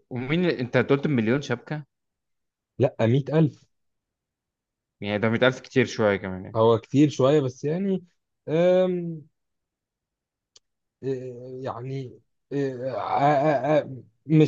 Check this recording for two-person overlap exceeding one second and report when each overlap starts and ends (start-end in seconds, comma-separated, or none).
none